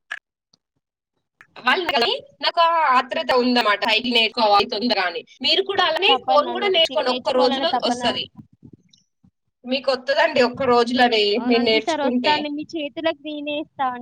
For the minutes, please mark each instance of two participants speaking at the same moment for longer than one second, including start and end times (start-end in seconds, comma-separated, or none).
6.1-8.0